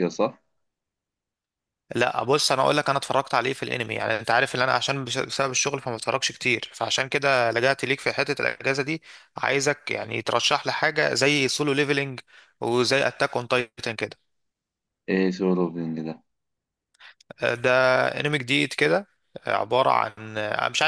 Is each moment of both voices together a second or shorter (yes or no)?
yes